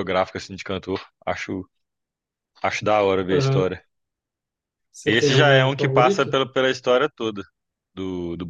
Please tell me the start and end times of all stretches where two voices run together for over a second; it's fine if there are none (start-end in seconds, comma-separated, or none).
5.0-6.4